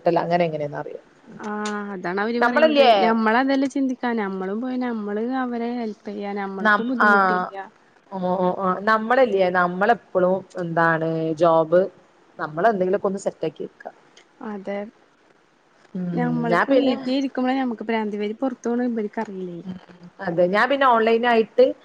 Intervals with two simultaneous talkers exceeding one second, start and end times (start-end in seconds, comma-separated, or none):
none